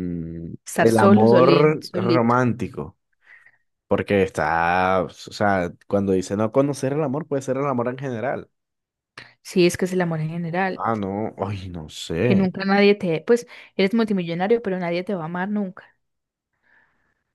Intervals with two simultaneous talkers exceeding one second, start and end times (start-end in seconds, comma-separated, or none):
0.7-2.3